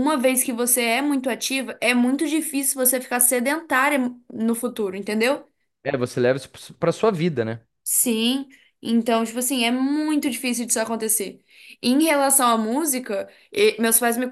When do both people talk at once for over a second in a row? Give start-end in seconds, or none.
none